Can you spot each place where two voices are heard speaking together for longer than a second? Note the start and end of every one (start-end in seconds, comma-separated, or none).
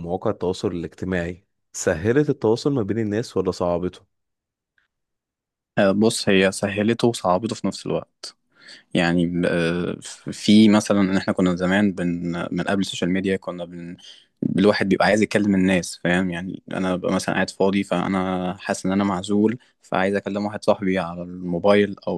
none